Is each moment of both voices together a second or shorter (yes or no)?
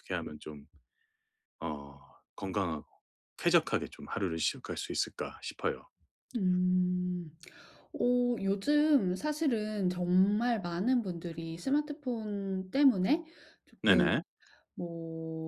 yes